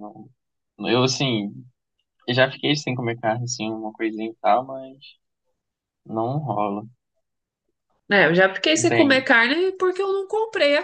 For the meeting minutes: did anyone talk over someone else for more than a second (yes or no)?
no